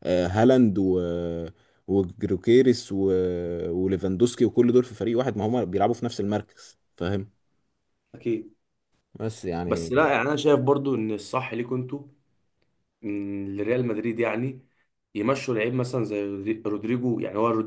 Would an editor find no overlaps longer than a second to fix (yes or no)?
yes